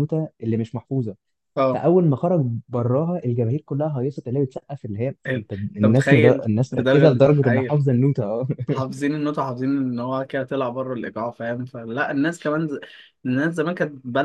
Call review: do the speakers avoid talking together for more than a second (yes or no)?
no